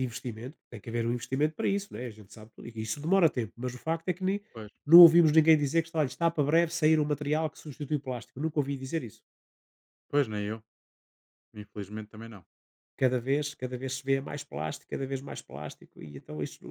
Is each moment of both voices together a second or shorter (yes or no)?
yes